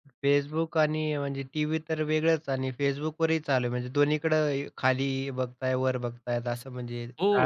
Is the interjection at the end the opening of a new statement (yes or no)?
yes